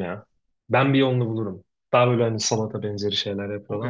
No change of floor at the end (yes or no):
no